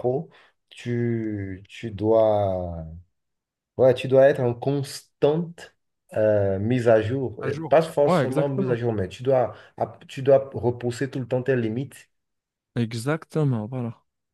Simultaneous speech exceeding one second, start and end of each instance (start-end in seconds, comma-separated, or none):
7.4-8.8